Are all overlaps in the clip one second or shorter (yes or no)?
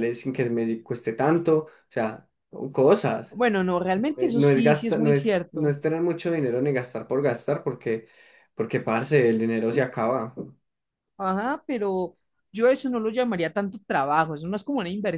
no